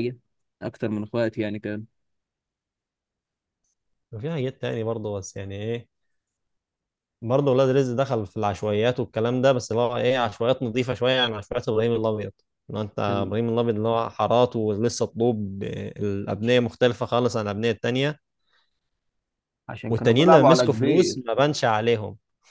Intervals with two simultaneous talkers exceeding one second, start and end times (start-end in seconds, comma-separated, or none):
19.9-21.2